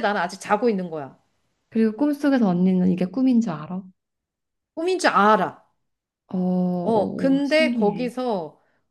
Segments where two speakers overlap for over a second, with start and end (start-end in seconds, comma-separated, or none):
6.8-8.1